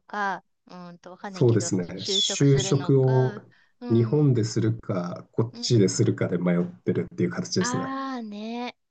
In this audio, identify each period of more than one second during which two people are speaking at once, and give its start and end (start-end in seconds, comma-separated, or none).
1.3-3.2